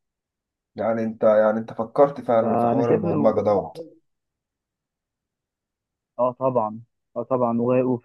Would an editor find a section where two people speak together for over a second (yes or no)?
yes